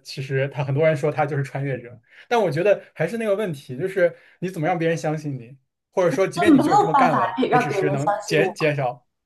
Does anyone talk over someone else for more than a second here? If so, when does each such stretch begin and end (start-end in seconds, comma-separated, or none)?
6.3-8.4